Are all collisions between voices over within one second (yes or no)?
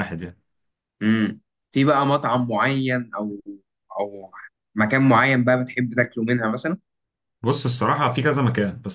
yes